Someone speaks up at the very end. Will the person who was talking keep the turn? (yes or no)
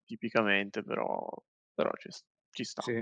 no